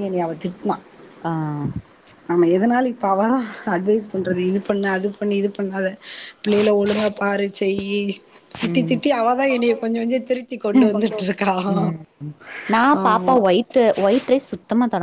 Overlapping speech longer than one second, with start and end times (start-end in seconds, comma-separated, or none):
none